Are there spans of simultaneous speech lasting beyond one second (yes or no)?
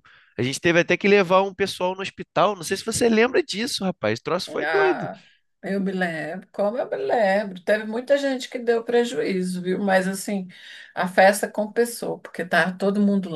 no